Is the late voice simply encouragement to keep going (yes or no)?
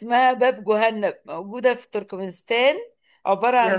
yes